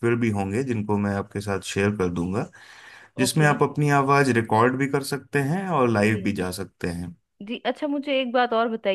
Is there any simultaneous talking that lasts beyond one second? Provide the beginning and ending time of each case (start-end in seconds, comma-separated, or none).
none